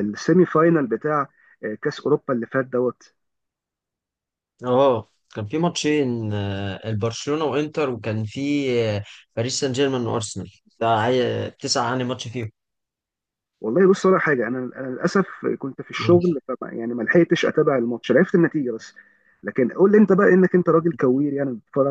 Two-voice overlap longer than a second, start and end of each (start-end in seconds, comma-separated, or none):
none